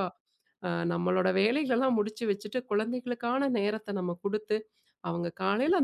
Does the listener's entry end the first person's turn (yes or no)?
no